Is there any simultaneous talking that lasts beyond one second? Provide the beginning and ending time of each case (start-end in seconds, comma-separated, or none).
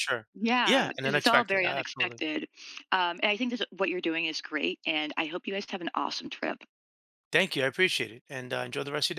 0.7-2.2